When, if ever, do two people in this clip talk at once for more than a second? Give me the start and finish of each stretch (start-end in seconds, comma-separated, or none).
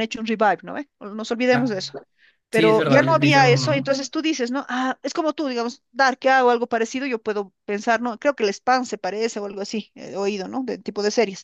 2.5-4.0